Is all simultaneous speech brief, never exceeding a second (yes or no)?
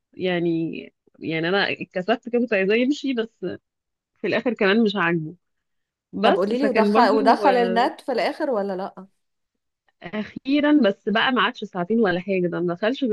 no